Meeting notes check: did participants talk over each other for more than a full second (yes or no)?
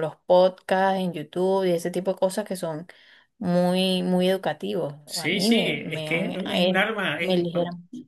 yes